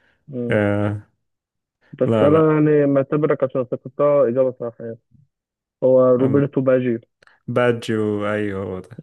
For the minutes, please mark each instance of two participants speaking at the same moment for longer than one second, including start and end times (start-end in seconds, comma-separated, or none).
none